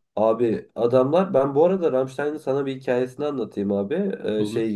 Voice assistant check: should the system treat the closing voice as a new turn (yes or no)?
no